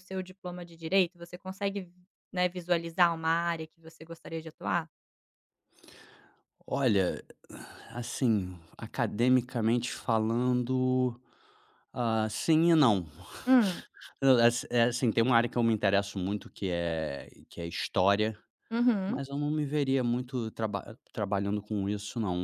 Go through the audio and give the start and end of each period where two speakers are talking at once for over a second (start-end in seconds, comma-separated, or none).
none